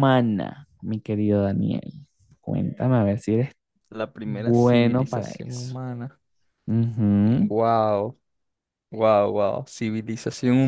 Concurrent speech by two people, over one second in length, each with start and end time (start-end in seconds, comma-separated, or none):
4.2-5.8